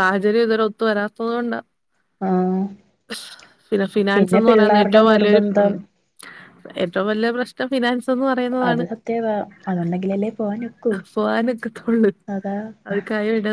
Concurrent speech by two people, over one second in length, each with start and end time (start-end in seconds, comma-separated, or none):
4.2-5.4